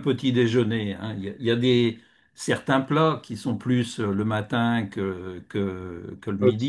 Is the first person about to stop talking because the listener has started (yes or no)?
yes